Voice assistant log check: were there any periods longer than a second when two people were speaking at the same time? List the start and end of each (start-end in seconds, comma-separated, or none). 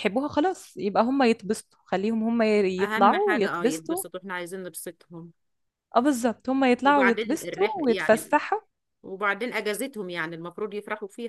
2.8-4.0, 6.8-8.3